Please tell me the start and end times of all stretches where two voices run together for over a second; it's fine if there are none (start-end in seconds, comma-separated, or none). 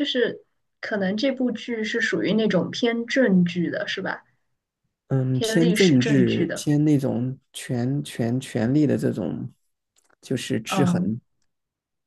5.3-6.7